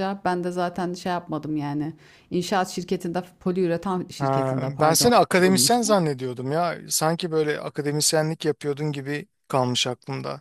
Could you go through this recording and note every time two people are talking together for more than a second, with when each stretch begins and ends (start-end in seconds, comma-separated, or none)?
4.2-6.0